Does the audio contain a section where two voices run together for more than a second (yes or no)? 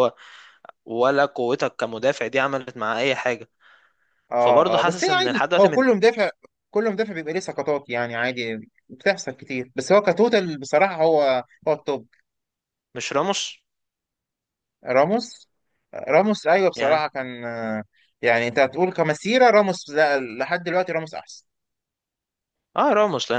yes